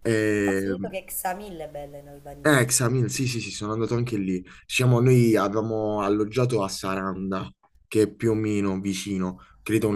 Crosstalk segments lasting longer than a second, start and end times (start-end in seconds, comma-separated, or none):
none